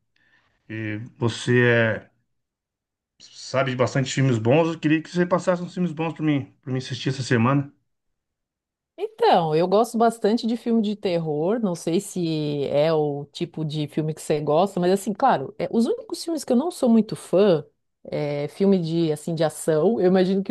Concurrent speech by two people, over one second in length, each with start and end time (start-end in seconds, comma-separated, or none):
none